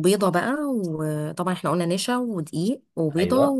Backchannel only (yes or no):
yes